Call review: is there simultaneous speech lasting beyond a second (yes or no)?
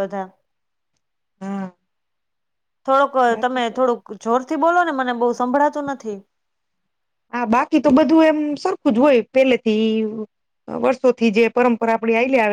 no